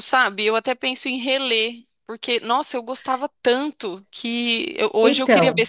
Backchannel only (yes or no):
yes